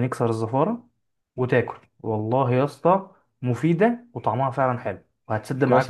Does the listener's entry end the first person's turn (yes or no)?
yes